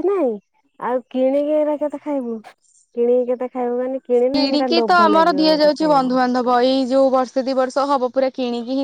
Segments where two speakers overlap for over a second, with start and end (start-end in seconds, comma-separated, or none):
4.3-6.2